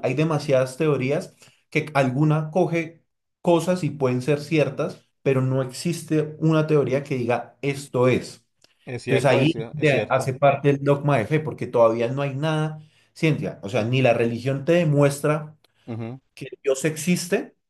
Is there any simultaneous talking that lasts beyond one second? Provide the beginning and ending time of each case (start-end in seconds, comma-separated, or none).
9.0-10.3